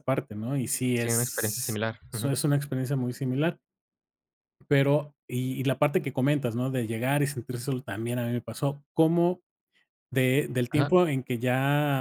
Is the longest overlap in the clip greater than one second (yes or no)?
yes